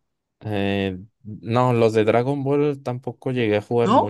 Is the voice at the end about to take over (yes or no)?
yes